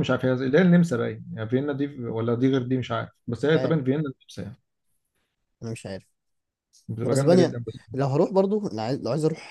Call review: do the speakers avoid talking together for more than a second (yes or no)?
yes